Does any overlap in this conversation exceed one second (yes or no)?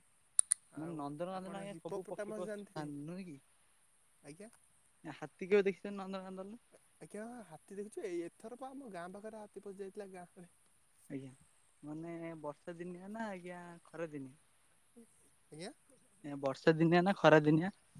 yes